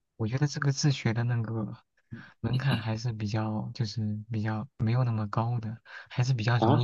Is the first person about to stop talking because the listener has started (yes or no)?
yes